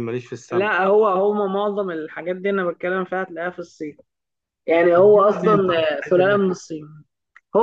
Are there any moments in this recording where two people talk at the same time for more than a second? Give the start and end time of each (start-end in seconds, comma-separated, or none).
5.0-6.5